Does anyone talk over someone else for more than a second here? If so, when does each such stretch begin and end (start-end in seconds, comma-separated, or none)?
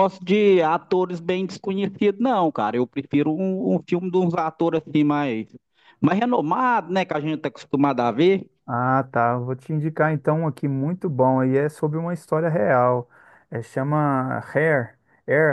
none